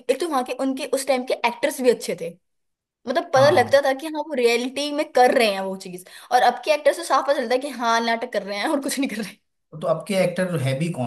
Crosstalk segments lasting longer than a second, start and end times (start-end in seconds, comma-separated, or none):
none